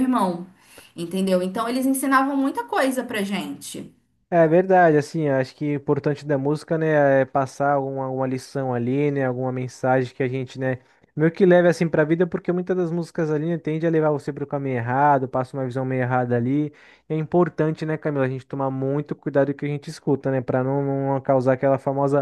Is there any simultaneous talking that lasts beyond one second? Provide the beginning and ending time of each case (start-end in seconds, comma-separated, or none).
none